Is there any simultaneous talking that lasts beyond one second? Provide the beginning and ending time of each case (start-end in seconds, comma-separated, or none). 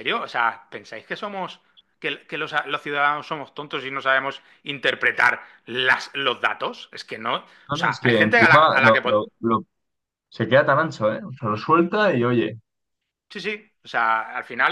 7.8-9.2